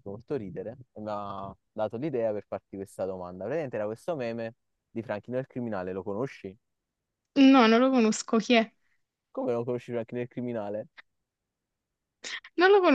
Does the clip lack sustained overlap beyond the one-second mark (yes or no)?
yes